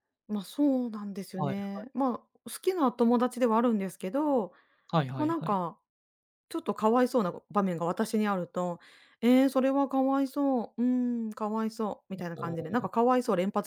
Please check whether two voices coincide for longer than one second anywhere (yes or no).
no